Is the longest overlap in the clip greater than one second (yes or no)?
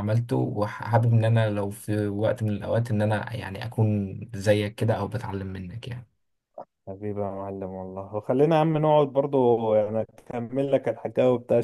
no